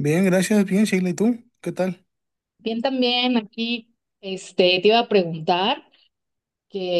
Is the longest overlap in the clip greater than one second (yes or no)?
no